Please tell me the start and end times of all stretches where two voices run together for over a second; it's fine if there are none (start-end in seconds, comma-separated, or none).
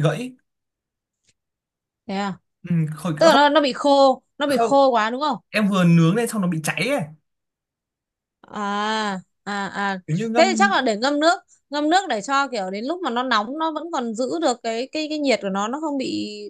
none